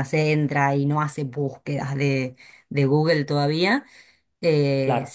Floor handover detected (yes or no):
no